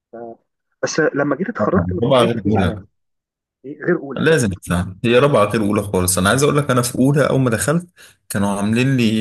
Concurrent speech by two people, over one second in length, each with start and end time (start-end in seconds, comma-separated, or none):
1.6-2.8